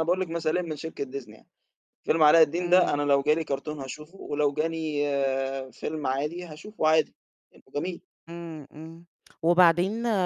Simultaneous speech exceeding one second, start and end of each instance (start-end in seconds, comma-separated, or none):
none